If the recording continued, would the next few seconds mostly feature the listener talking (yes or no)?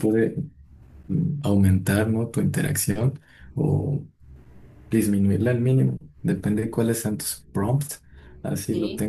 no